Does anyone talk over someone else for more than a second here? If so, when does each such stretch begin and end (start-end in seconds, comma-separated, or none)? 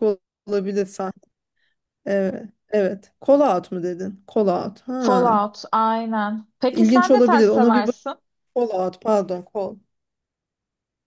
6.7-8.0